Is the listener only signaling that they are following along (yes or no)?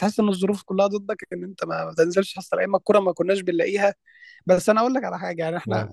yes